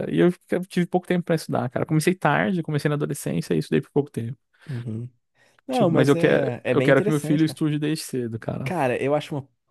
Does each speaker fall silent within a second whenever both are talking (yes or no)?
no